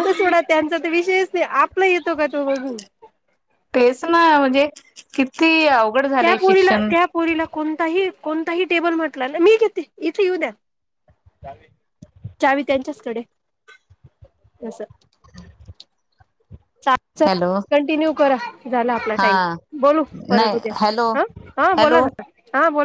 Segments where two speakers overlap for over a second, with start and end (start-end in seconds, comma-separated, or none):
none